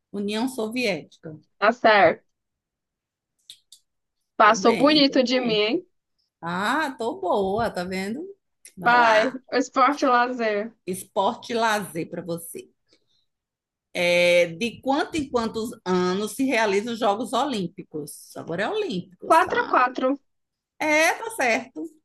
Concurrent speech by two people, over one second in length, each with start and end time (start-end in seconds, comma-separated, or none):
4.4-5.7